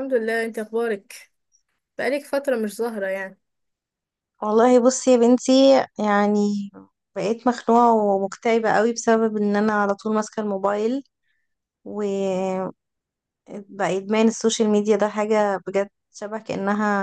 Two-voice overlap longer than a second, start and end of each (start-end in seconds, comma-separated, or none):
none